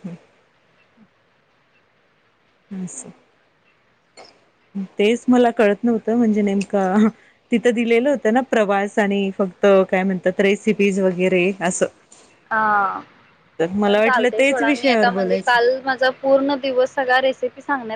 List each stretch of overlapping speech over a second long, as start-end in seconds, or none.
13.8-15.6